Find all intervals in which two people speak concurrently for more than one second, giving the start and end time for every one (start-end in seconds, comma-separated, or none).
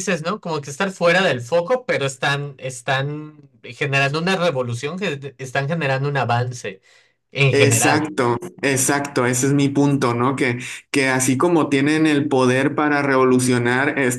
none